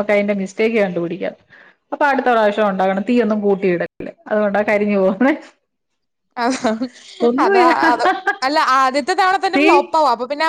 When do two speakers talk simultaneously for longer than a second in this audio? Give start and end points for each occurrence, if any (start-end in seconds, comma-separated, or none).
none